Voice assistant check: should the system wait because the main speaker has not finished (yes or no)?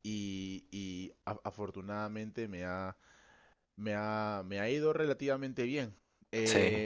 yes